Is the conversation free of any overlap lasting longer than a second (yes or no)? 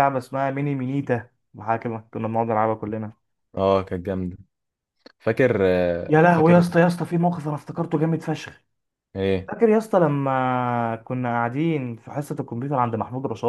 yes